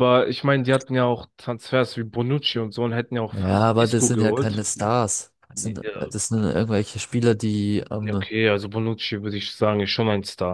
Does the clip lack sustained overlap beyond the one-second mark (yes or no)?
no